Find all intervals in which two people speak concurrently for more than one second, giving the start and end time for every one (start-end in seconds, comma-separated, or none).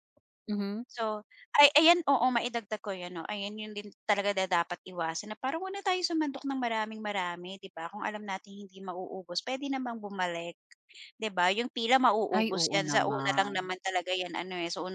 12.4-13.7